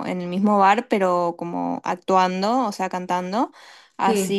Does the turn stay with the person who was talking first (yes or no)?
yes